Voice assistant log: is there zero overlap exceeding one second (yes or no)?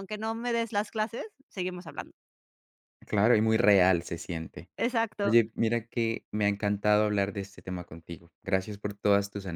yes